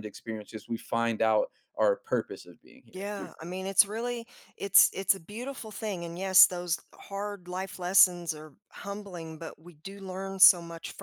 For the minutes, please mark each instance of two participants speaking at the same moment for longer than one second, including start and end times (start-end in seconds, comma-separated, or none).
none